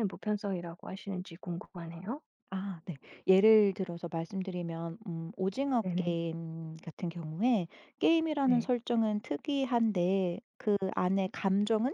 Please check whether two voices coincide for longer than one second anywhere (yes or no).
no